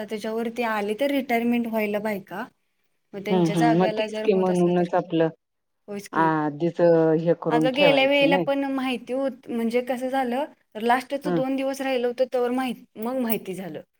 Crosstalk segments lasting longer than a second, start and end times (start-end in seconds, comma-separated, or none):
3.3-4.8